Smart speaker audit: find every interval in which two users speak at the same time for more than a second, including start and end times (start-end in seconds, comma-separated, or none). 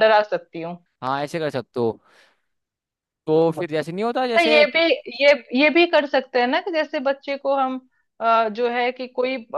none